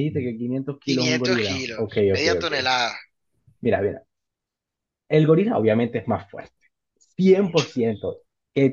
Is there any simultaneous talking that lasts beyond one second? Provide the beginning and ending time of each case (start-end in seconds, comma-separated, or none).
0.8-2.5